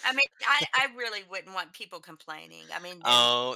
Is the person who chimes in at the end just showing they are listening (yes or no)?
no